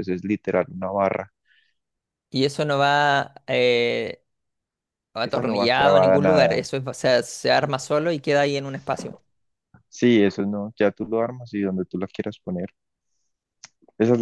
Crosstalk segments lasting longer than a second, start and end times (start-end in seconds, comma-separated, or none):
5.3-6.7